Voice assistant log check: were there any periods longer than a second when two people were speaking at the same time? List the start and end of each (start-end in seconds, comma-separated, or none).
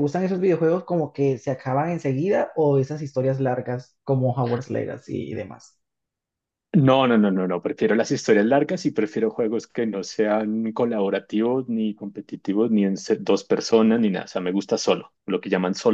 none